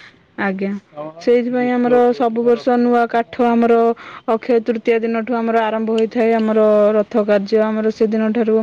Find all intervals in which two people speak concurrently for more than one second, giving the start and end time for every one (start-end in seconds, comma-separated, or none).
1.6-3.3